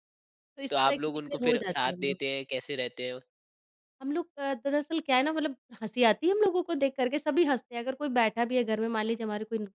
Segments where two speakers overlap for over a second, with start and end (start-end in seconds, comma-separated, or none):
0.7-2.2